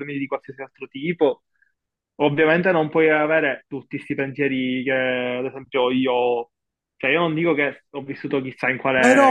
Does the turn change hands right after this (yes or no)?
yes